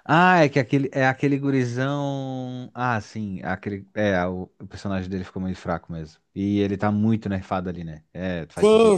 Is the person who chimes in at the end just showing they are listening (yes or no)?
no